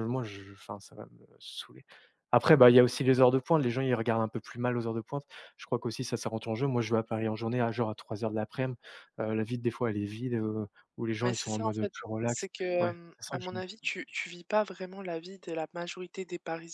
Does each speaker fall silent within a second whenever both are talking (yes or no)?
no